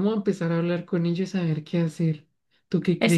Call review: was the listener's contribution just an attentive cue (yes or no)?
no